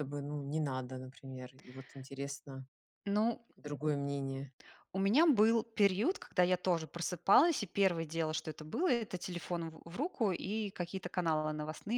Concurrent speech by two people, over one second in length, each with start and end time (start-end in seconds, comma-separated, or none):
none